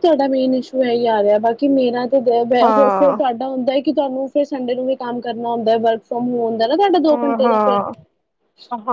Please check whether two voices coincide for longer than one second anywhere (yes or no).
no